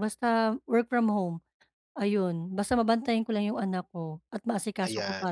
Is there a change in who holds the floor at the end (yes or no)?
yes